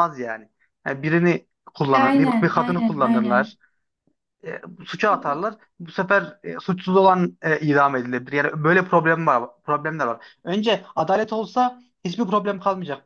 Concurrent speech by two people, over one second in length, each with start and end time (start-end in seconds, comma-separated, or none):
1.9-3.6